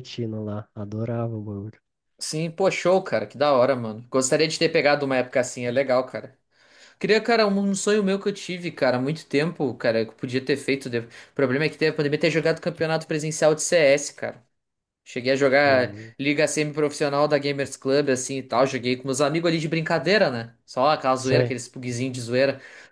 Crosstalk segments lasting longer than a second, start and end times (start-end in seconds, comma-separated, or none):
none